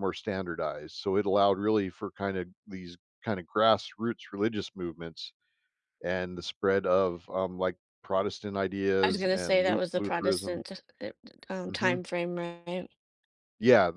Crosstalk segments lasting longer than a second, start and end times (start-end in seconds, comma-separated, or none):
9.0-10.6